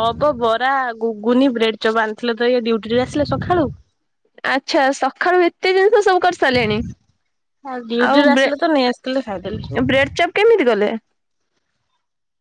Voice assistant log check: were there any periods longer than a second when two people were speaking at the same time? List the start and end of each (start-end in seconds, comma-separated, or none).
8.1-9.6